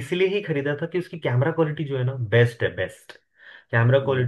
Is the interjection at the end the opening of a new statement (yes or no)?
no